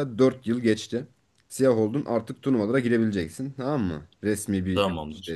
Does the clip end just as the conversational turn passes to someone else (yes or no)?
no